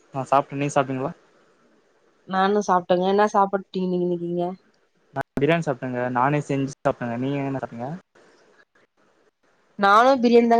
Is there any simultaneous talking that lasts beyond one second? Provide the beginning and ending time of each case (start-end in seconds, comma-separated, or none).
none